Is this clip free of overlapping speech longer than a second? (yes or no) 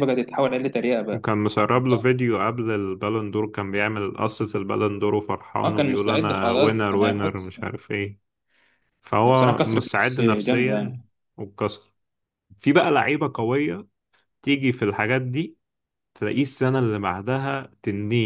no